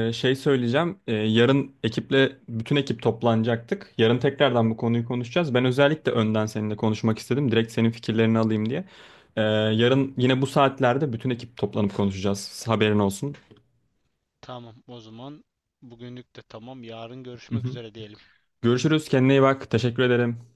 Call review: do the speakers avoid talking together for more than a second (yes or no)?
yes